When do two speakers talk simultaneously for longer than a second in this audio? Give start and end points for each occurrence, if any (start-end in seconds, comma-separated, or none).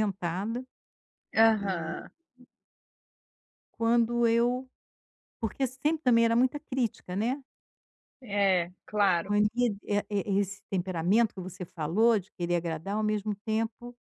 none